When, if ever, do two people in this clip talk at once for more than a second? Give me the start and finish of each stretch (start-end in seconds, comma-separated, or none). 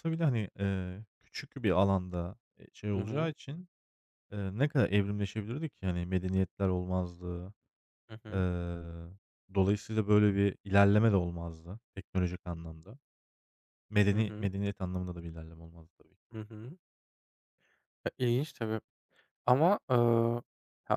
none